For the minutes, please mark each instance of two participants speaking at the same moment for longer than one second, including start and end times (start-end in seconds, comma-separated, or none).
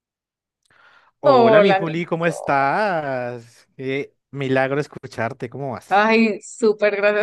1.2-2.6